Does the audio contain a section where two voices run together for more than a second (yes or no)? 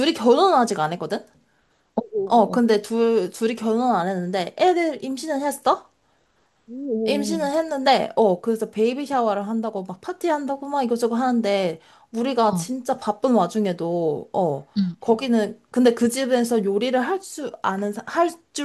no